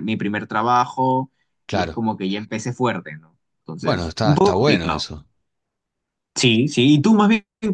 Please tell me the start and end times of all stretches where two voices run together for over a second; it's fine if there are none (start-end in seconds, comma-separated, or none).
3.8-5.1